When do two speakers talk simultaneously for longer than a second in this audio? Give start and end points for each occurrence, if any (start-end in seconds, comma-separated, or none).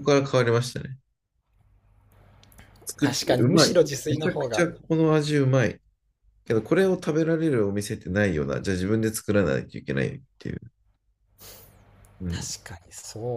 3.0-4.7